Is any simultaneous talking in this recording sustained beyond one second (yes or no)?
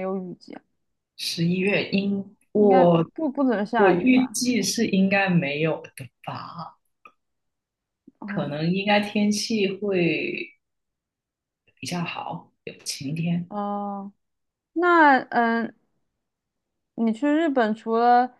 no